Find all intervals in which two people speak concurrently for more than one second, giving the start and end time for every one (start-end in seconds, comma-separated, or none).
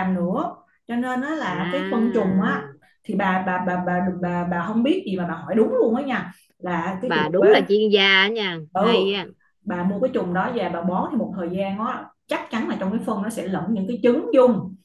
1.5-2.7